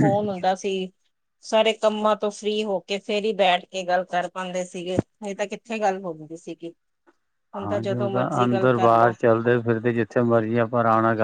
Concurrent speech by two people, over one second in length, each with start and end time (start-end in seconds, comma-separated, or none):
7.6-9.1